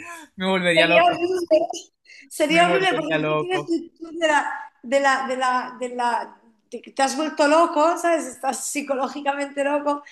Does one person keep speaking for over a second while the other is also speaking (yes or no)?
yes